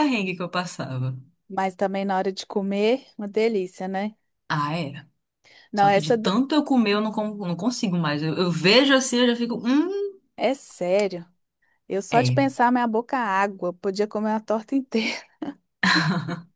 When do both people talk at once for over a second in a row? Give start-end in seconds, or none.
none